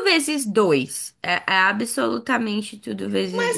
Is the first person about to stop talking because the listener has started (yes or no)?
yes